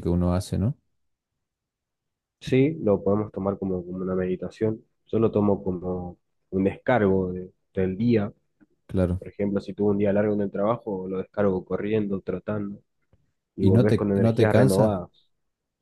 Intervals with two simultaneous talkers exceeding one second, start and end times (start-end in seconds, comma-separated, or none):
13.6-14.9